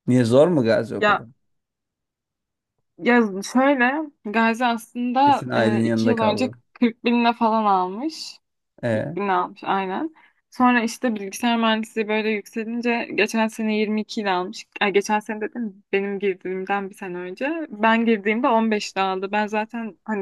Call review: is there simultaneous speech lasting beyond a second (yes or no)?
yes